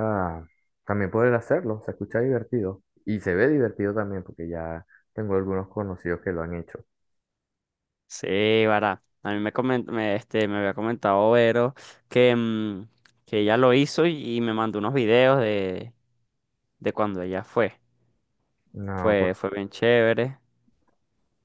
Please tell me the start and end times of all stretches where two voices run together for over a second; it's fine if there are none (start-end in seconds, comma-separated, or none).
none